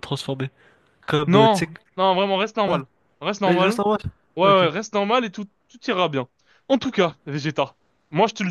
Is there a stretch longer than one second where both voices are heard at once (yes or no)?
no